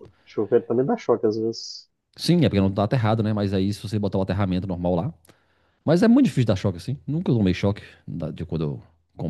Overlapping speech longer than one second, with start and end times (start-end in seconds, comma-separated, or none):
none